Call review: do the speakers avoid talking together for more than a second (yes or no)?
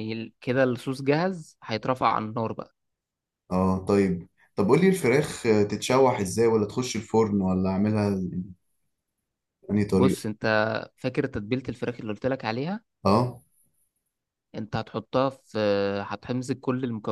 yes